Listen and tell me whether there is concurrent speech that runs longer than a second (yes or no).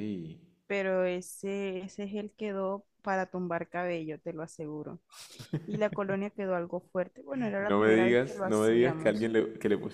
yes